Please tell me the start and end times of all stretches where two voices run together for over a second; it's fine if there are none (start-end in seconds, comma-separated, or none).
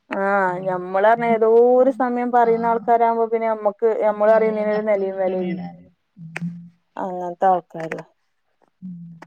4.1-5.6